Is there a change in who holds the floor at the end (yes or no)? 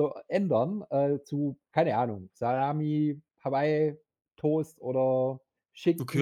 yes